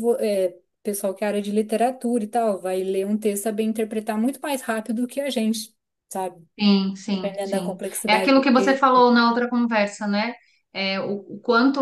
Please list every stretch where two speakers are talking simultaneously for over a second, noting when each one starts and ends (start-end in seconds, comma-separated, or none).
7.1-8.9